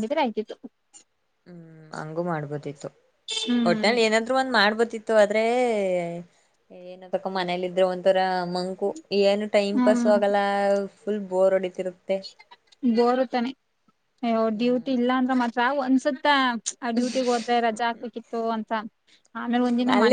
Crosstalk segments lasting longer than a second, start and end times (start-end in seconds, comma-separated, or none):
none